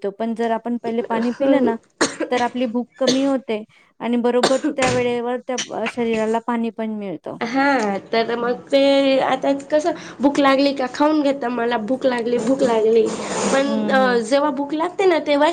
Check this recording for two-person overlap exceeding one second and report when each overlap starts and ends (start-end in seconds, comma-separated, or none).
none